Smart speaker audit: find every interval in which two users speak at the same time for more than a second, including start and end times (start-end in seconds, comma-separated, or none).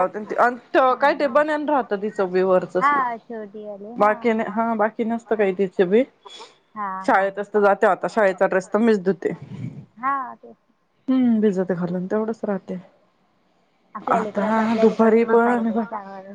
14.1-15.8